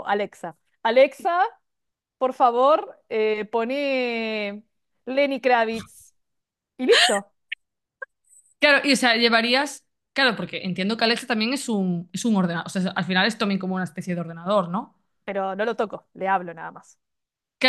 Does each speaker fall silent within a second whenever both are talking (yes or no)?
yes